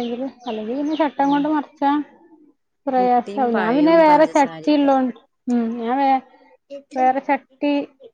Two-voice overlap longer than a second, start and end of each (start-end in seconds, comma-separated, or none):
3.0-4.9